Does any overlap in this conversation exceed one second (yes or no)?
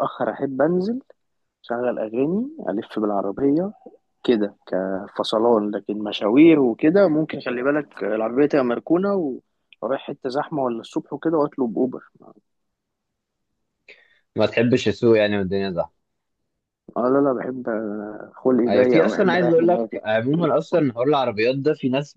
yes